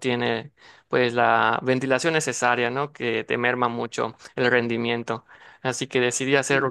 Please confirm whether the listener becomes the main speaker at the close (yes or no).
no